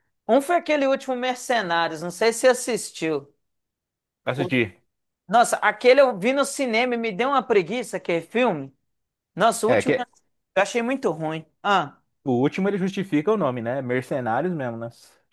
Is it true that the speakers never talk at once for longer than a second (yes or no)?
yes